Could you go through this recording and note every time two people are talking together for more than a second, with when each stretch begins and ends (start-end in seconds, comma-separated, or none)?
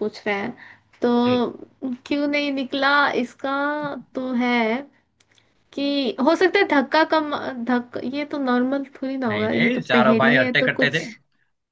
9.3-11.0